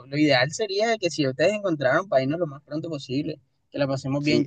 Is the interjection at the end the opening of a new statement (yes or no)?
yes